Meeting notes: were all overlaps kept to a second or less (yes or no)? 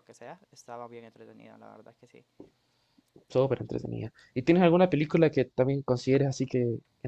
yes